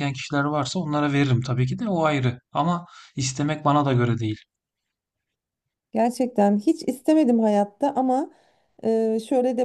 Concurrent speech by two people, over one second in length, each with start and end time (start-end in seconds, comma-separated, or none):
none